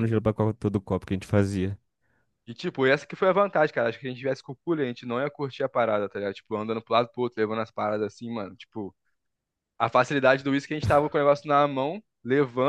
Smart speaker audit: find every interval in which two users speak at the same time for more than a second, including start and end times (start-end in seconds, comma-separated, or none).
none